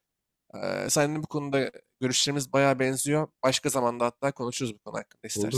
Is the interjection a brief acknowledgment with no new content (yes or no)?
no